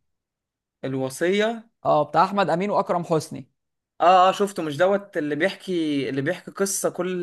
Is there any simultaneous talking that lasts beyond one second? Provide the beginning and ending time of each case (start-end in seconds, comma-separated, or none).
none